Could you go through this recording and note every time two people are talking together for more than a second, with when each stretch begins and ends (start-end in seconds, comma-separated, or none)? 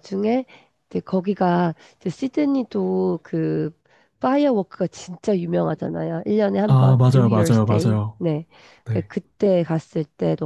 6.7-8.2